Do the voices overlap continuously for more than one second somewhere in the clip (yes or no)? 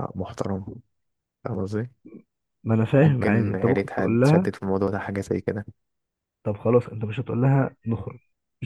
yes